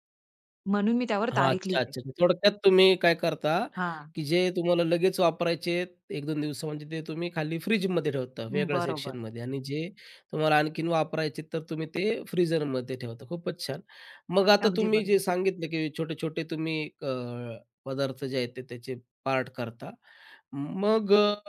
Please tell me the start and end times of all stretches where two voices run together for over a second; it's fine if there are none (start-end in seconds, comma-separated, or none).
none